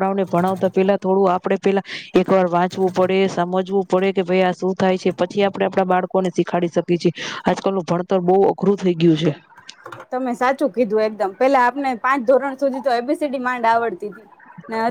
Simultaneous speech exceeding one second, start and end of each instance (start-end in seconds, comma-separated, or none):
none